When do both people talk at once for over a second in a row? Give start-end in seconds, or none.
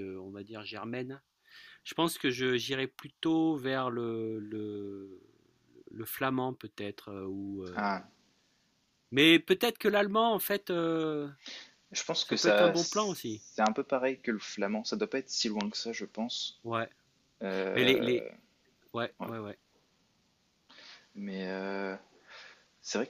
12.2-13.4